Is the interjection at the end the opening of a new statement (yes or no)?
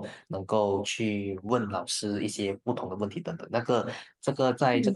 no